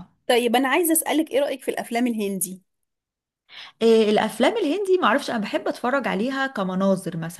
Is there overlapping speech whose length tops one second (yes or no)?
no